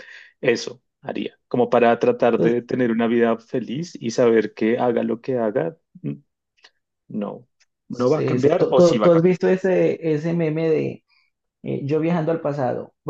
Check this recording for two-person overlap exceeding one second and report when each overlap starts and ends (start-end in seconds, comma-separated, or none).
7.9-9.4